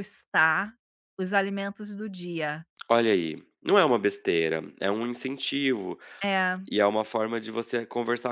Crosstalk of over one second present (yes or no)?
no